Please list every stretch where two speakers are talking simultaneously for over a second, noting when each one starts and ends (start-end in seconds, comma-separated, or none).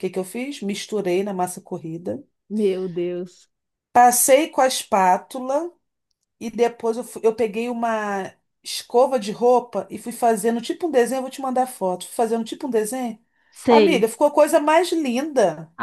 none